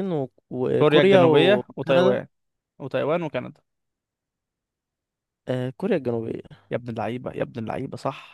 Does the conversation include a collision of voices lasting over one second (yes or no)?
yes